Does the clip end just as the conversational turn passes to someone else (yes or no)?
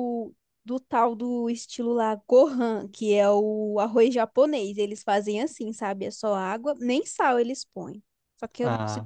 no